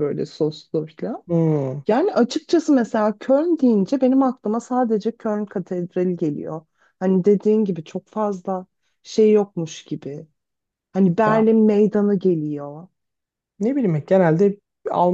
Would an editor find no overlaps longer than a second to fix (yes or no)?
yes